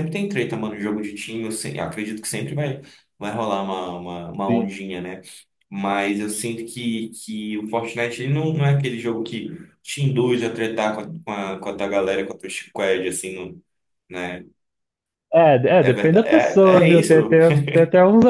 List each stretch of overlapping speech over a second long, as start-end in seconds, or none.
15.8-17.4